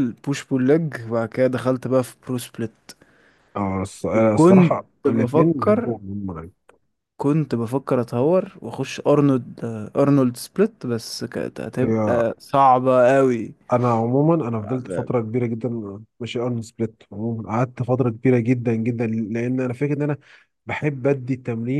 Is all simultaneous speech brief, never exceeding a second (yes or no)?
no